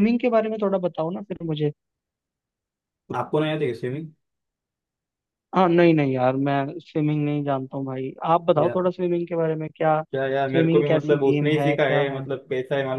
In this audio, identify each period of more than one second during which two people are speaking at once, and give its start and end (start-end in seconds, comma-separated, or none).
10.5-12.2